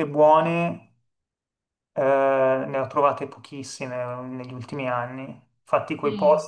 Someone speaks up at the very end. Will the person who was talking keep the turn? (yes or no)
yes